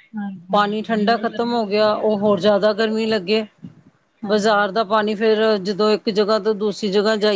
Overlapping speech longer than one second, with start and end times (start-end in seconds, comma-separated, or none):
0.5-3.1